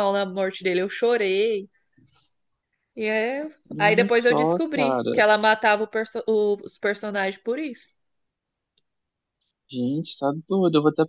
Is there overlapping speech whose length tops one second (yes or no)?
yes